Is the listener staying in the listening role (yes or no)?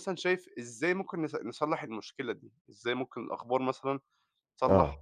yes